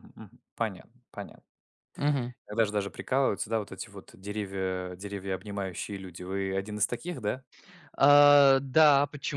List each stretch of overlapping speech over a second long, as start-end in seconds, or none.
none